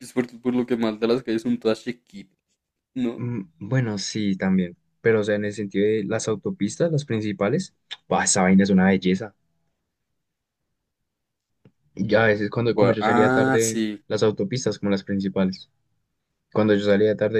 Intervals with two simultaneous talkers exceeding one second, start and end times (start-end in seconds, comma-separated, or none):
12.7-14.0